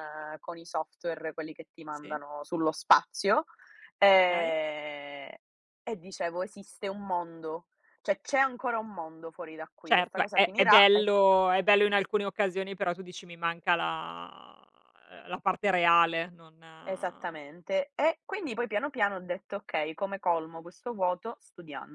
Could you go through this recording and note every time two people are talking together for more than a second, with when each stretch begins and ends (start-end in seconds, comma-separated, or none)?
9.8-11.1